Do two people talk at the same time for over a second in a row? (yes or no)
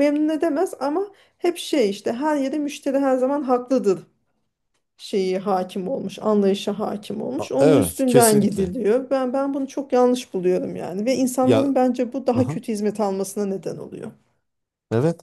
yes